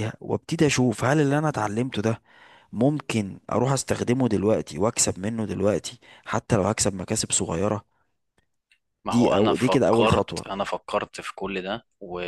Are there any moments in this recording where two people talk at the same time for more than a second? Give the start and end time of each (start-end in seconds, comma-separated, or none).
9.1-10.4